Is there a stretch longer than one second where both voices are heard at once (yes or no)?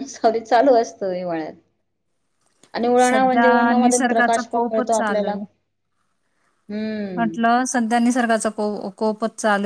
yes